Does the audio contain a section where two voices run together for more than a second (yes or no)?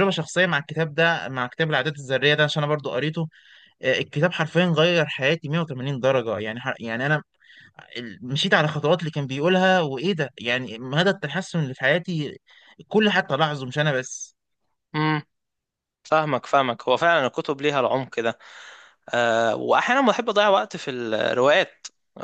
no